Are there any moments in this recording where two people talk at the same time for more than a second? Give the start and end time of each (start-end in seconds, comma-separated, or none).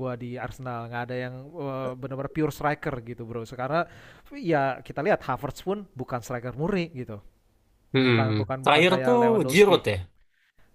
8.0-9.8